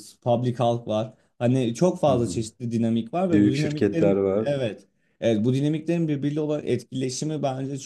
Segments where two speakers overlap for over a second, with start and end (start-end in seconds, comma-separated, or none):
3.2-4.6